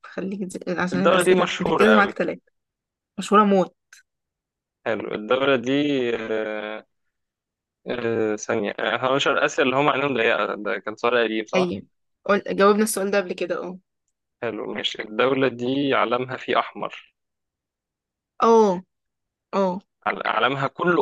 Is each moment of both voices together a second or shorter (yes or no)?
no